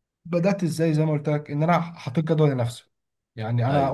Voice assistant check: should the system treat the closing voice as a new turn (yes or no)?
no